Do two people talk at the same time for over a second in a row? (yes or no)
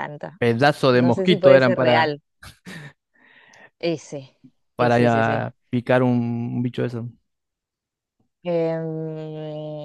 yes